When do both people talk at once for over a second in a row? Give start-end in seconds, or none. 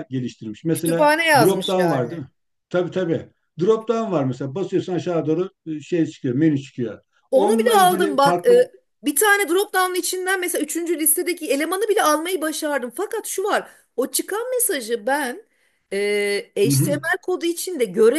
0.7-2.3, 7.3-8.6